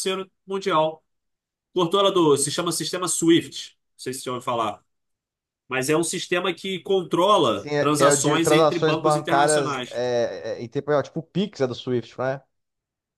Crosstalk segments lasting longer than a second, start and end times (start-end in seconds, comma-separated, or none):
7.5-10.0